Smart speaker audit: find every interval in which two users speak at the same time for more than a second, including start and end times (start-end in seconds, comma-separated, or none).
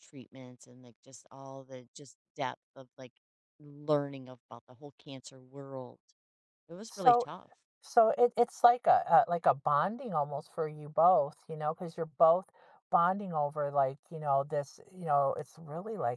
none